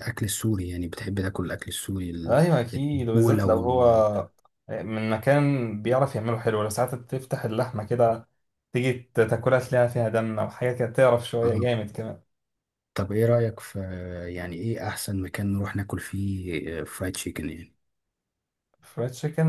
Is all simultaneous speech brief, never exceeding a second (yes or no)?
no